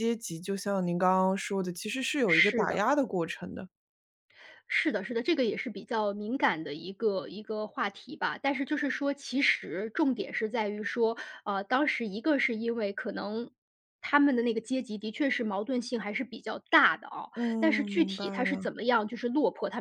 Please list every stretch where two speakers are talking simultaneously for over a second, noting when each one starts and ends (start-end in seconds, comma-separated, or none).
17.3-18.7